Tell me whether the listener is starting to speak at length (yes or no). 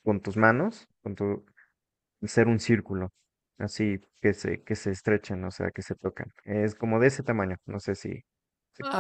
yes